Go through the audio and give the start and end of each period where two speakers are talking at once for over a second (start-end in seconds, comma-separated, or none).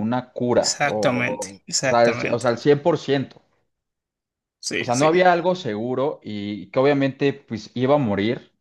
0.6-2.5